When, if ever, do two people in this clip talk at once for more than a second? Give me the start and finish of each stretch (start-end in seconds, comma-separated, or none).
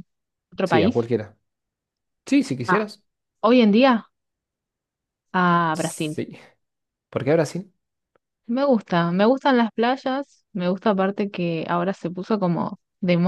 none